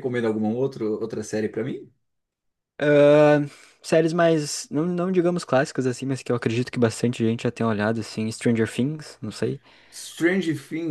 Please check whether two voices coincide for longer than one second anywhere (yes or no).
no